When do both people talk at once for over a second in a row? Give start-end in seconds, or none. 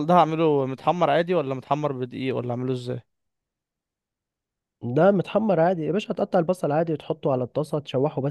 none